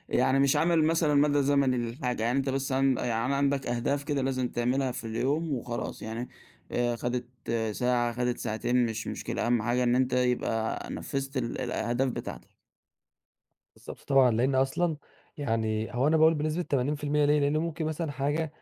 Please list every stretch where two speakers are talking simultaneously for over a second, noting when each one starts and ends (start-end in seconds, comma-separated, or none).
none